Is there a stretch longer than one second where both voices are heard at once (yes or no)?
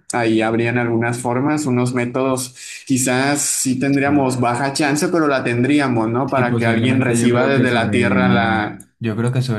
yes